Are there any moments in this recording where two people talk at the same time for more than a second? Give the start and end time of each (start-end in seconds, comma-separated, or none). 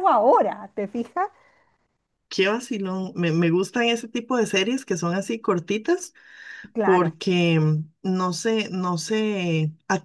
none